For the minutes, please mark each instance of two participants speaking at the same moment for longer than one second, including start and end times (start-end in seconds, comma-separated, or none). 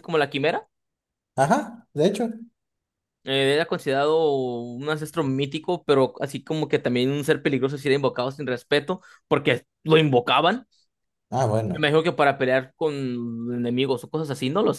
none